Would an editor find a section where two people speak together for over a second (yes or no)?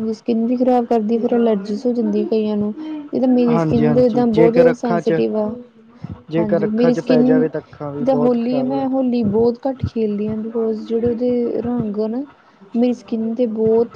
yes